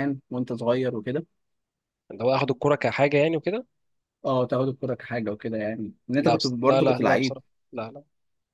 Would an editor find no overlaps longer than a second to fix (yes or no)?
no